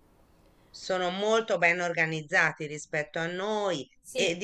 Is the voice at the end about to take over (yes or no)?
no